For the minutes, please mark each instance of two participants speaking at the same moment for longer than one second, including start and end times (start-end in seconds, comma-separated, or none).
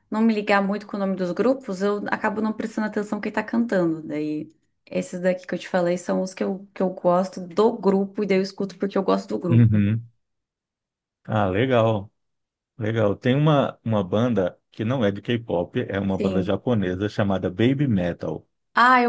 none